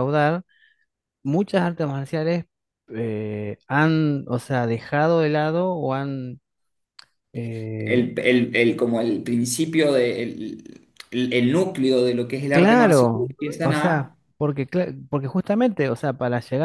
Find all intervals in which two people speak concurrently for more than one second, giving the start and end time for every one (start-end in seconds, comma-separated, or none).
12.5-14.2